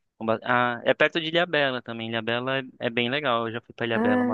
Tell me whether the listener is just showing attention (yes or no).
no